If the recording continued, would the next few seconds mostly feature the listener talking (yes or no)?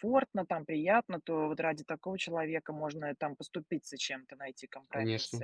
no